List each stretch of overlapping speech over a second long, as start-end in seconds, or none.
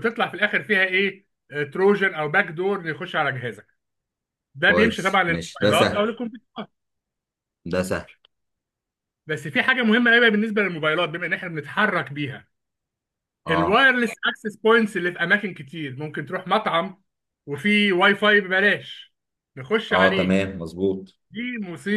4.7-6.2